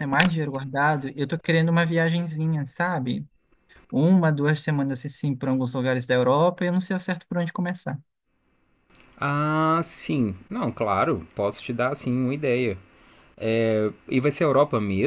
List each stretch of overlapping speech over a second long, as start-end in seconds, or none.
none